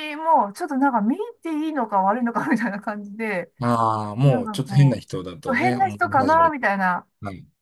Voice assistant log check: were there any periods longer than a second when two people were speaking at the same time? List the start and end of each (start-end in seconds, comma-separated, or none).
4.2-6.6